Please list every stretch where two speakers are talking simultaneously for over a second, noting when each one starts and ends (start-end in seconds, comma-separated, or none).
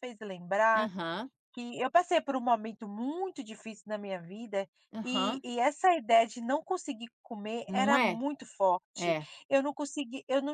none